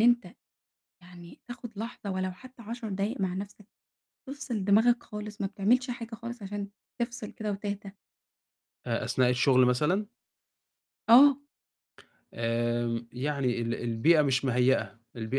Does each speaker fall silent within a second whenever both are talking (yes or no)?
yes